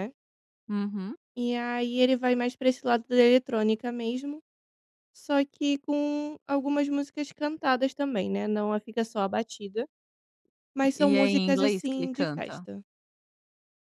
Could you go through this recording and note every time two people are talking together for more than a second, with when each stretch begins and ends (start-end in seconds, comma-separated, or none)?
10.9-12.6